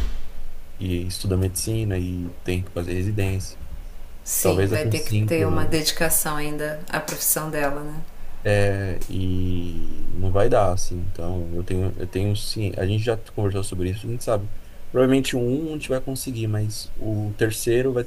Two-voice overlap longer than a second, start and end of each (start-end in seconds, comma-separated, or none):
4.4-5.8